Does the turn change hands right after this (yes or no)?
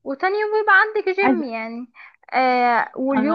no